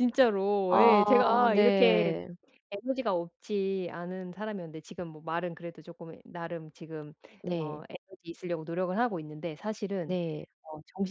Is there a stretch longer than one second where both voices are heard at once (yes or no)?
yes